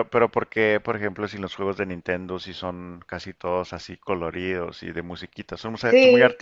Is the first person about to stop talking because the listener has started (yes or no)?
no